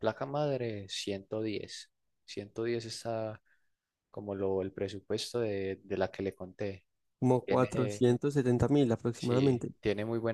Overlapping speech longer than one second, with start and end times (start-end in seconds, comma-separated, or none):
none